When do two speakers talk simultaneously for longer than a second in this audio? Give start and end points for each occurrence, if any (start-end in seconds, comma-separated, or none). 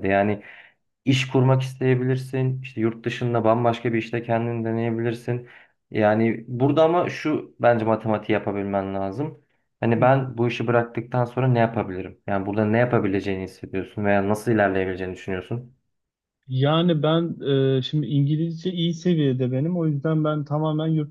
none